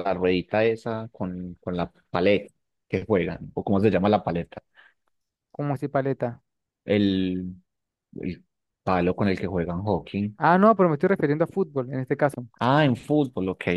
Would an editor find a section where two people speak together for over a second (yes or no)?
no